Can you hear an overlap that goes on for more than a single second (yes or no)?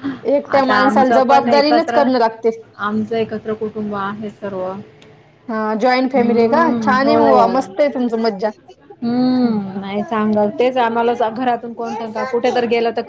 yes